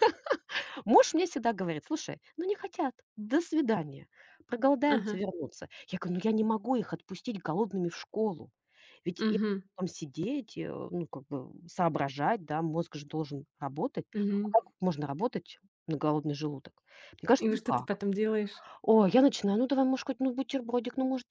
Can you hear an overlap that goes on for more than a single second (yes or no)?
no